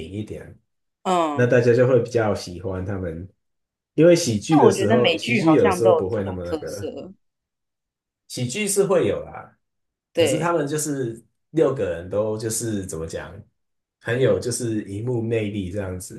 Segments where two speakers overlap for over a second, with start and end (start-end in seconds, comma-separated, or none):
4.5-6.9